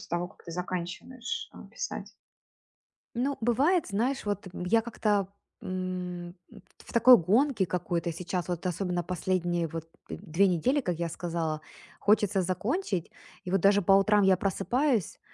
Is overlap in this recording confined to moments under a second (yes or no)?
yes